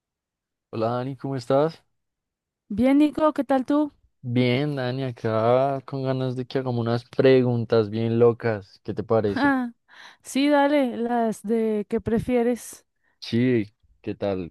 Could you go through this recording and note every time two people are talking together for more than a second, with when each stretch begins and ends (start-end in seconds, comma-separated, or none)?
none